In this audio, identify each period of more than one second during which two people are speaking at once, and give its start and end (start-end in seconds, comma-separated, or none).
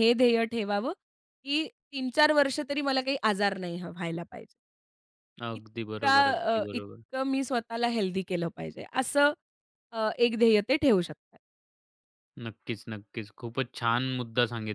5.5-7.0